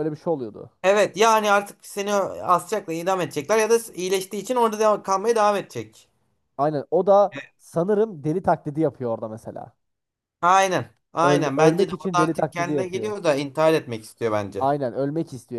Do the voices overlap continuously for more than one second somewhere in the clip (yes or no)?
yes